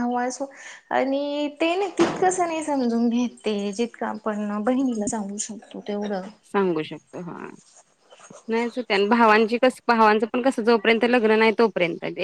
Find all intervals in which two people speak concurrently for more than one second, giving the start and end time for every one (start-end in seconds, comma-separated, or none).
none